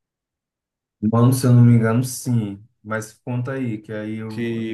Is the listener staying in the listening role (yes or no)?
no